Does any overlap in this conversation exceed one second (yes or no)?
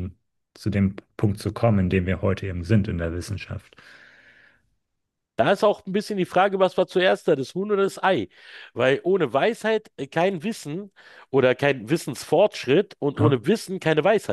no